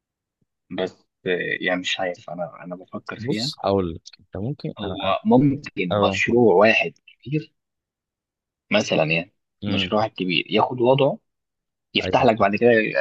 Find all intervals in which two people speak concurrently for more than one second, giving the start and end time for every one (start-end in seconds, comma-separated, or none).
none